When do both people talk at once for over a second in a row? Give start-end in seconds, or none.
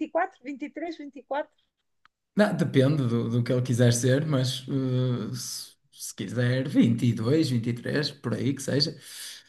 none